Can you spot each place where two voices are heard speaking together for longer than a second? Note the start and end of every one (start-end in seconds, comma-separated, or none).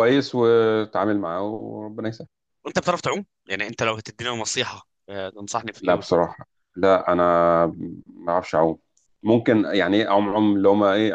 none